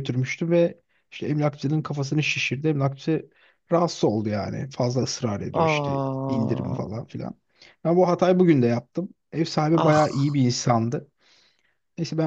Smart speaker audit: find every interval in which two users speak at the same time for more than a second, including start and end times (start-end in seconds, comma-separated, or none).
5.5-7.0